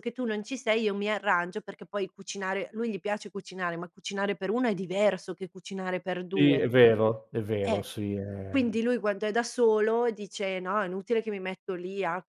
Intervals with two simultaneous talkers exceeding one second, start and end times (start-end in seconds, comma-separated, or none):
none